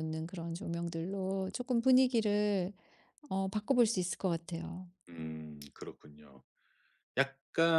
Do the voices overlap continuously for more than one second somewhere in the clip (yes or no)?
no